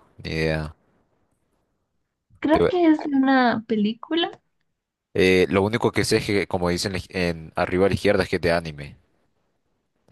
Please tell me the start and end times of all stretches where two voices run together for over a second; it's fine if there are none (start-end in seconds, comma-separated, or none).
none